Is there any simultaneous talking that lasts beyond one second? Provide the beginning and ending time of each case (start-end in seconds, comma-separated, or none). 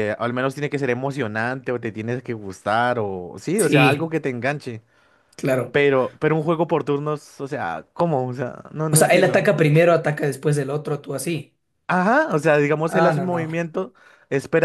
none